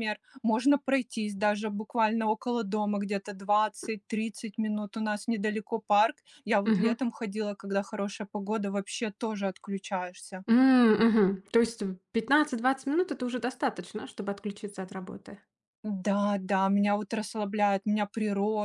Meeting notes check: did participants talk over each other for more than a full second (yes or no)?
no